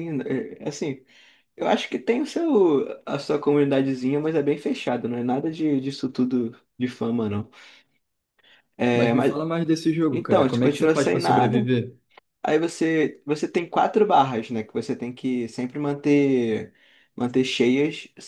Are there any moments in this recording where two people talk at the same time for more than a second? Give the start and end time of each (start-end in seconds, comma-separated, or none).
10.1-11.7